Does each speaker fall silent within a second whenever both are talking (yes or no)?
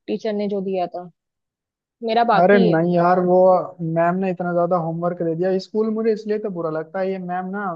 yes